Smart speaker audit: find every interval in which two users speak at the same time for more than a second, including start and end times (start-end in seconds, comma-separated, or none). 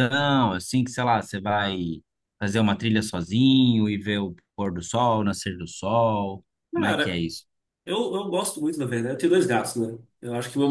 none